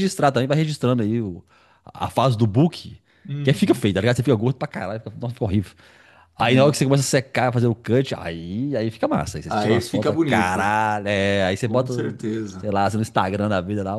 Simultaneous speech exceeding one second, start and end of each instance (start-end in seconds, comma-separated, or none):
9.5-10.7